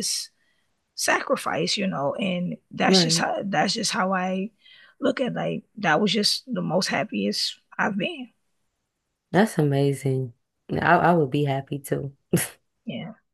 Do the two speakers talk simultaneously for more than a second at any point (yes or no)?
no